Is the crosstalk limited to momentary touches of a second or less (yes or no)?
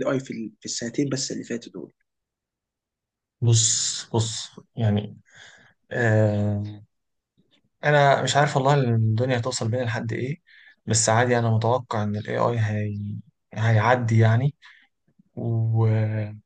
yes